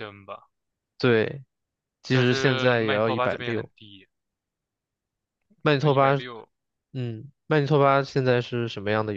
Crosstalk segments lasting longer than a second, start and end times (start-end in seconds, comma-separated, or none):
2.1-3.7